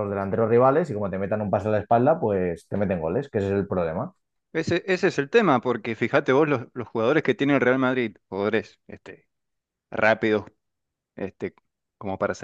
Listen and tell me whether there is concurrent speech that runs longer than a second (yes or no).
no